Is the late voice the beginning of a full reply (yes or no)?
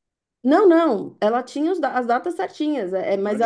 no